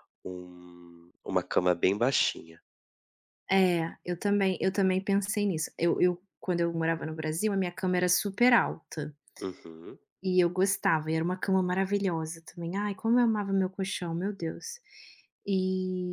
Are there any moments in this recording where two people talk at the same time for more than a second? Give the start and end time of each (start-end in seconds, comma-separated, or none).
none